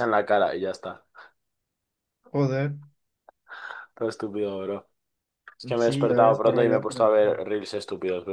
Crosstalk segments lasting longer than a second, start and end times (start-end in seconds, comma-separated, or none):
5.8-7.4